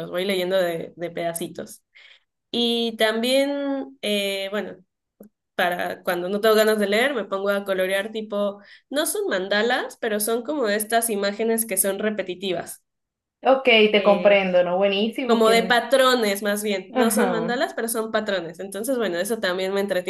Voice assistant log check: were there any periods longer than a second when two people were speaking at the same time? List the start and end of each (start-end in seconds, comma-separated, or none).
none